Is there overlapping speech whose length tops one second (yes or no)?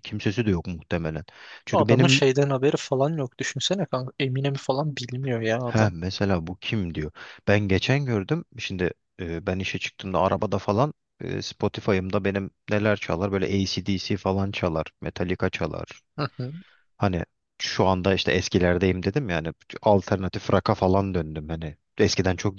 no